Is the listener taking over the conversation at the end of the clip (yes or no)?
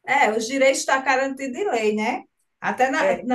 no